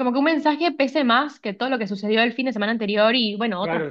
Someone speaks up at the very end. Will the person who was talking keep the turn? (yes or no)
no